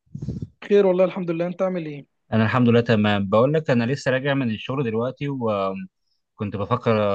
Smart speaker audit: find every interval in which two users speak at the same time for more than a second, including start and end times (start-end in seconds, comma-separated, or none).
none